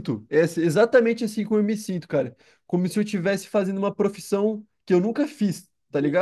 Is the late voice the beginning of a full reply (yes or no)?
yes